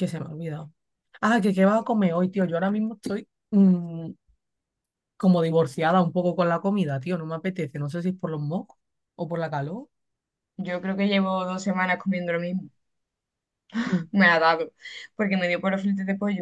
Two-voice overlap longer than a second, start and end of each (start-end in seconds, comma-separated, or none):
none